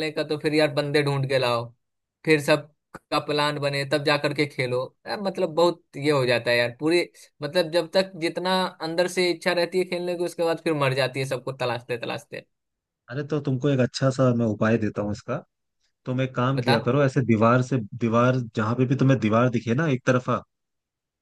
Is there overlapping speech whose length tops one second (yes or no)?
no